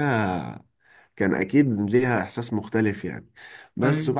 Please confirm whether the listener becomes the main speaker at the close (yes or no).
no